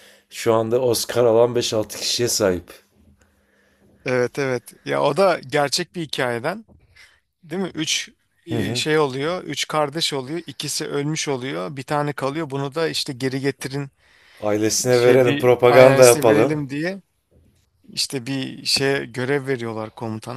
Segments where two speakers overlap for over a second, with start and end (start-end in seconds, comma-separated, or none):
14.9-16.6